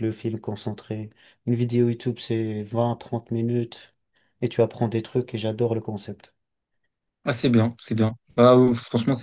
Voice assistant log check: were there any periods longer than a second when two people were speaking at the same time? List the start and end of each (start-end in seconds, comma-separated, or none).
none